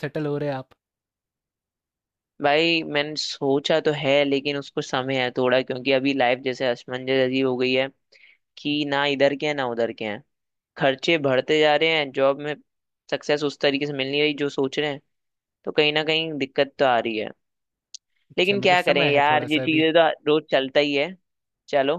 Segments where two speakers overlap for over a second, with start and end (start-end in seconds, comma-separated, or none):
18.4-19.9